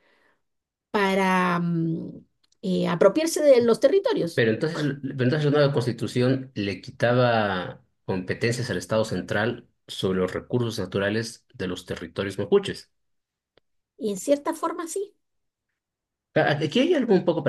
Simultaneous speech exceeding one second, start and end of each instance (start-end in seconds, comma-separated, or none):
none